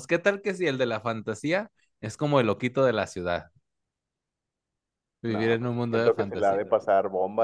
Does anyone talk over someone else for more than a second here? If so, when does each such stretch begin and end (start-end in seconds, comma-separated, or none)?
5.3-6.6